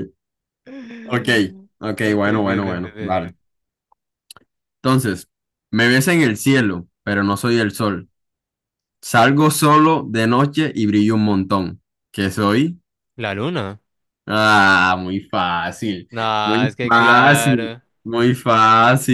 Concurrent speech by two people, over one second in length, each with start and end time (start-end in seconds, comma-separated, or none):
2.0-3.3, 16.1-17.8